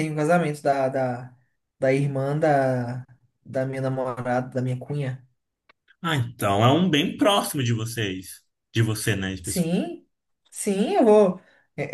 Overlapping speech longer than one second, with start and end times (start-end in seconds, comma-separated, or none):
none